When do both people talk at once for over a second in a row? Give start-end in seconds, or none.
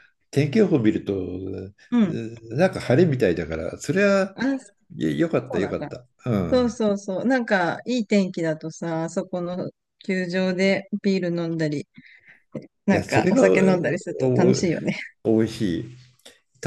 12.9-14.6